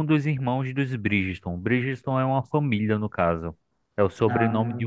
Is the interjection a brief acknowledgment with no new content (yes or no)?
yes